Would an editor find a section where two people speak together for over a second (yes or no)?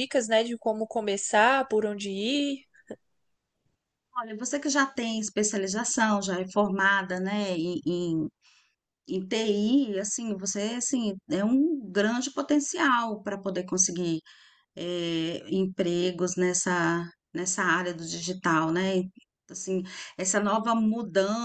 no